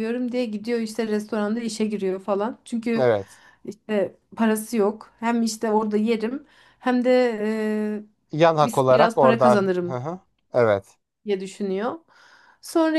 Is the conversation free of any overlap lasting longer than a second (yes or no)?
no